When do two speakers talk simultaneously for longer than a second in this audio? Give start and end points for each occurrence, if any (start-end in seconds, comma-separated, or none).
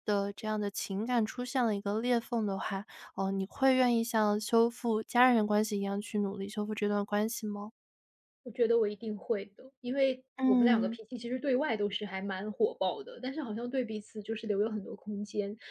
none